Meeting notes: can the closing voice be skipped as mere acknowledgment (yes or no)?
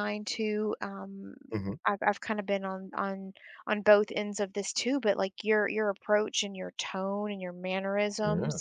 no